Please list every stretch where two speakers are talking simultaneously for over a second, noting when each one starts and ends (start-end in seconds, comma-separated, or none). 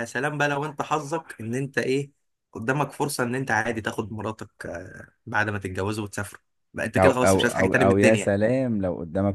7.0-8.3